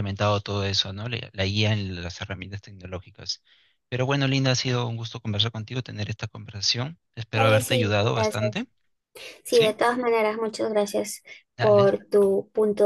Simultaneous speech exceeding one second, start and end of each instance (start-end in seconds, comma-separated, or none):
7.3-8.7